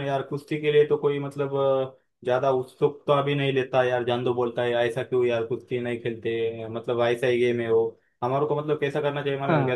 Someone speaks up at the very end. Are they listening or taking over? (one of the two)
listening